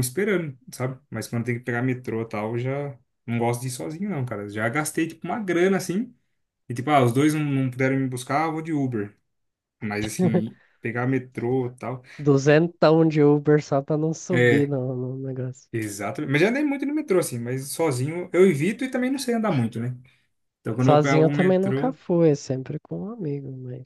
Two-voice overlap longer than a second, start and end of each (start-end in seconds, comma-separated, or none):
20.8-22.0